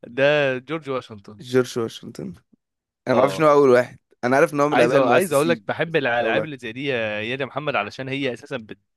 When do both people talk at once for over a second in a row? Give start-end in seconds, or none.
4.7-6.5